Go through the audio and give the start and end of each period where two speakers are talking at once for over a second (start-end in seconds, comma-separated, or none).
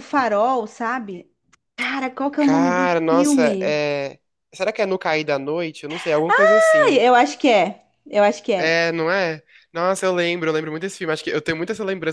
2.4-3.8